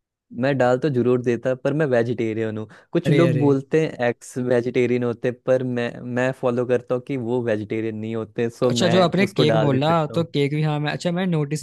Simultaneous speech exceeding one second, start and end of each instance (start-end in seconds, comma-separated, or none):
8.6-10.3